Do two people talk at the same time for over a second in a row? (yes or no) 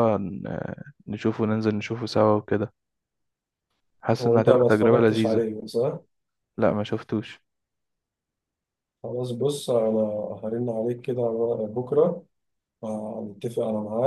yes